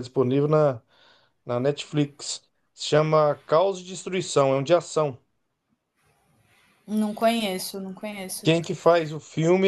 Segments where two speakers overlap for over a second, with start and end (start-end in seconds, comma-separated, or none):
none